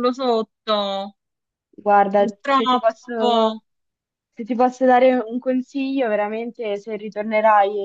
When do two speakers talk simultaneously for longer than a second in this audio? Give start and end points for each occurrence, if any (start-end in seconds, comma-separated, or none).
2.1-3.6